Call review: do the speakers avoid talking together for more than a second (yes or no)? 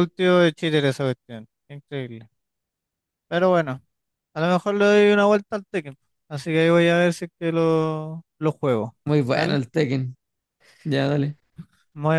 yes